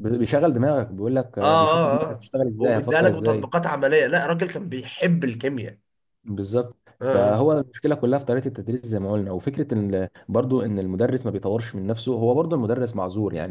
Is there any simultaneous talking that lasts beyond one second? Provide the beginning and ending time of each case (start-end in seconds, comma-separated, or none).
1.4-3.5